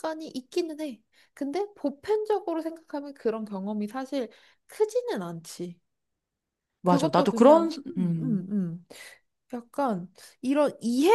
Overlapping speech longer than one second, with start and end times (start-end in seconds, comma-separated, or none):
6.8-8.5